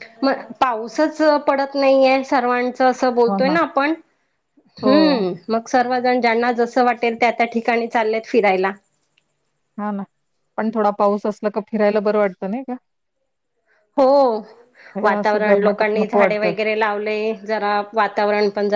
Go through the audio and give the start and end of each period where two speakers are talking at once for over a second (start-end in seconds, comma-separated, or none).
15.0-16.5